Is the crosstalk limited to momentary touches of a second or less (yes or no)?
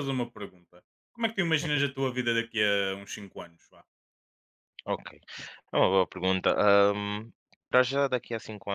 yes